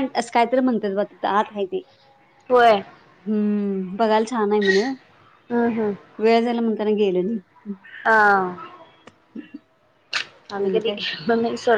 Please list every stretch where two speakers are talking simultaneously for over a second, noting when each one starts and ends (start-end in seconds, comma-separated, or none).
none